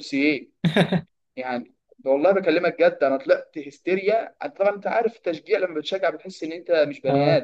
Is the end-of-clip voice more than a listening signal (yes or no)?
yes